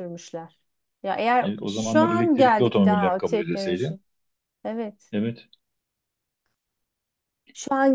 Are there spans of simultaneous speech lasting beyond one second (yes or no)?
yes